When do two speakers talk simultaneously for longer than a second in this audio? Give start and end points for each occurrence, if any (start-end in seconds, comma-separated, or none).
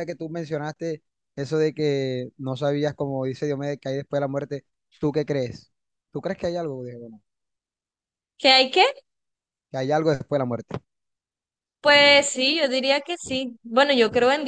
none